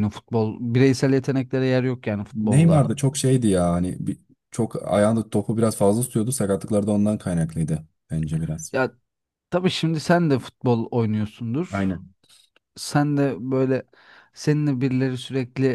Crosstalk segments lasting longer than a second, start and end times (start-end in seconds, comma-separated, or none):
none